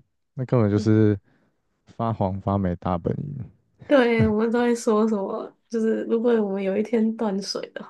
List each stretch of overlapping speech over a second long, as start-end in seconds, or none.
none